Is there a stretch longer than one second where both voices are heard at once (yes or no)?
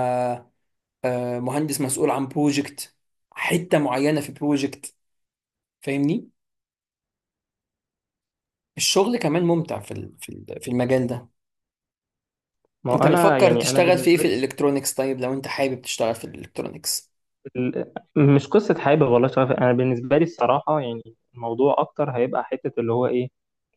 yes